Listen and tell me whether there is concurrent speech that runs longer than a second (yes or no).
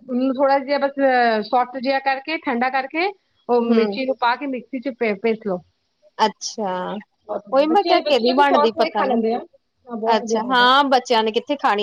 yes